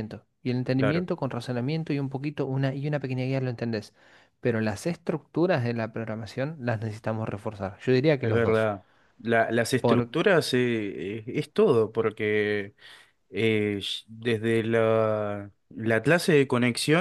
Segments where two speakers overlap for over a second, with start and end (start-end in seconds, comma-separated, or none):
none